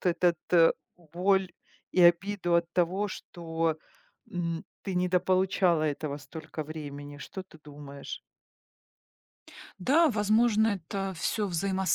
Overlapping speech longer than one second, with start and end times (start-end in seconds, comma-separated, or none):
none